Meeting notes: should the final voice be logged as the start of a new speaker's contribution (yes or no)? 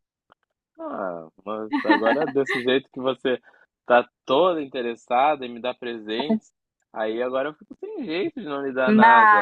yes